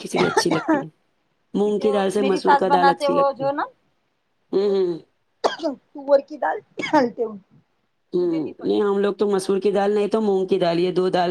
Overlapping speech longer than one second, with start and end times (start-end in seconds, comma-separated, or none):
1.6-3.5